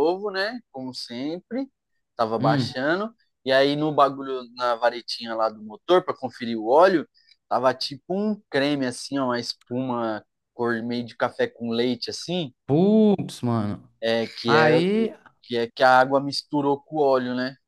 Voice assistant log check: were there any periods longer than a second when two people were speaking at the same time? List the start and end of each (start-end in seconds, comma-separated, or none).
none